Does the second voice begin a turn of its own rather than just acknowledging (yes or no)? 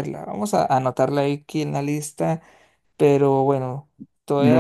yes